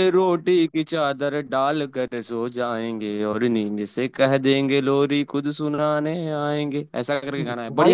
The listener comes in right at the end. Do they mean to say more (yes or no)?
yes